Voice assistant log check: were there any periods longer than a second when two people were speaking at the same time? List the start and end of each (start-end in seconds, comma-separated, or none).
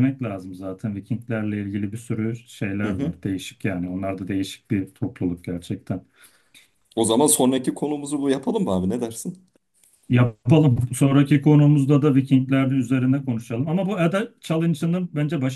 none